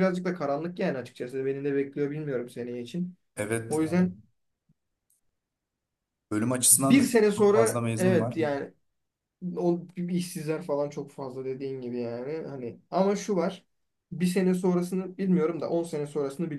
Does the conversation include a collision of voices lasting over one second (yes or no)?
yes